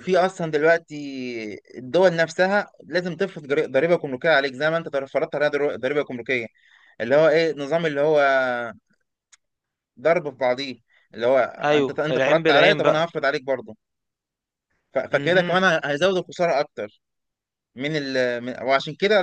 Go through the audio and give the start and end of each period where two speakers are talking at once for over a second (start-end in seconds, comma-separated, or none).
11.6-13.1